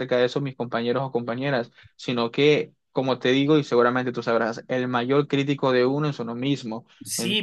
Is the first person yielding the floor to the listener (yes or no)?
yes